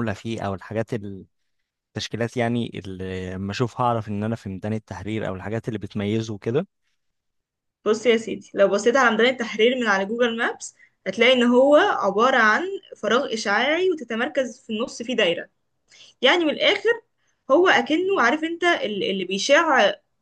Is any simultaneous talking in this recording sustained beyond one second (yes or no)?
no